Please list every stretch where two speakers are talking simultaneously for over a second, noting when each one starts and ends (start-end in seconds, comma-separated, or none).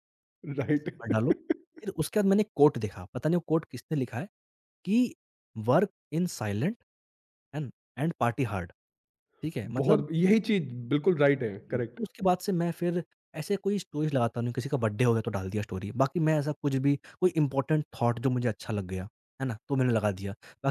none